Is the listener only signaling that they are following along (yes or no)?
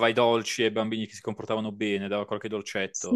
no